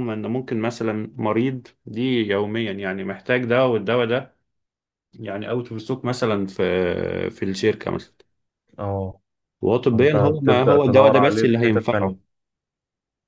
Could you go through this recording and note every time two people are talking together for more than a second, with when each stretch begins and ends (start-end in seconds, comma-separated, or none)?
9.9-12.2